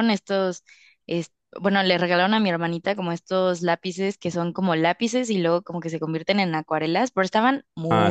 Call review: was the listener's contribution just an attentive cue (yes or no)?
yes